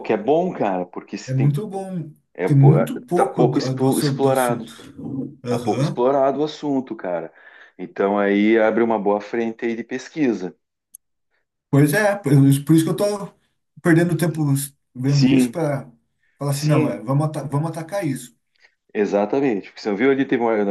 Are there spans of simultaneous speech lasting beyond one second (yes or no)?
yes